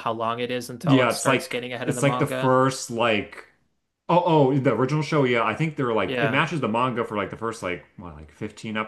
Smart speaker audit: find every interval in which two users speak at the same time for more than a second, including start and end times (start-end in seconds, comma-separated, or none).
0.8-2.5